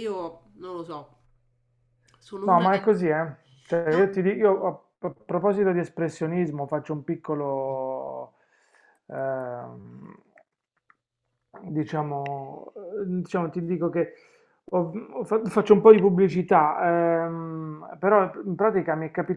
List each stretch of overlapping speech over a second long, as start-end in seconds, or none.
none